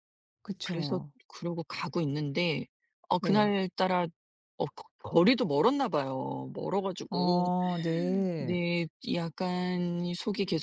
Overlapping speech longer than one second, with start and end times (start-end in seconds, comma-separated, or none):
none